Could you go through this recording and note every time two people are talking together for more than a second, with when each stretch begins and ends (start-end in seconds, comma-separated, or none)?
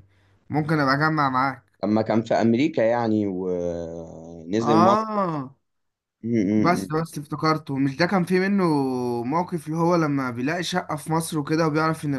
none